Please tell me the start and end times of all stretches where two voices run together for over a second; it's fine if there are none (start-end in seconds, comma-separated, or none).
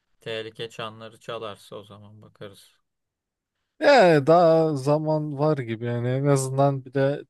none